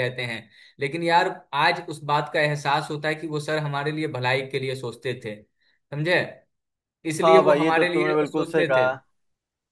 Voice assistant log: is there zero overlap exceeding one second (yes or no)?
no